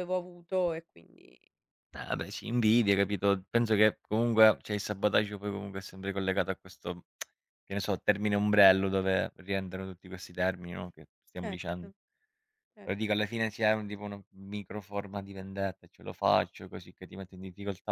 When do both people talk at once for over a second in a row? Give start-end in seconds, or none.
none